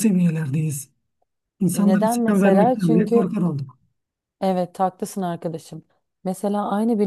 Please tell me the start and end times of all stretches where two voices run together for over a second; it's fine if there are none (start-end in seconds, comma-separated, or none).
1.7-3.3